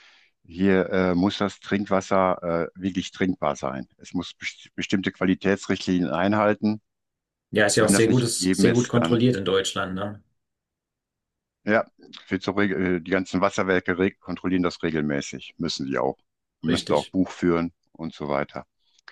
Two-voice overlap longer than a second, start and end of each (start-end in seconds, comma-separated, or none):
7.7-9.2